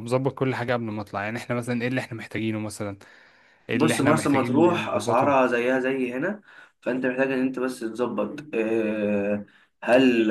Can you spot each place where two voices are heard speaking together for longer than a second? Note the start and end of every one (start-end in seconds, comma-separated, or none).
3.7-5.3